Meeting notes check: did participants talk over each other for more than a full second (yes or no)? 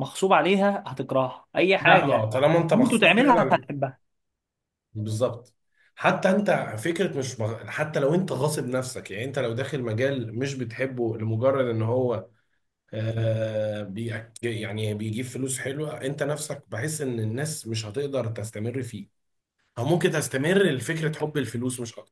yes